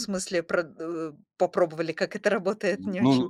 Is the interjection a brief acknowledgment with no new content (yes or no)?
no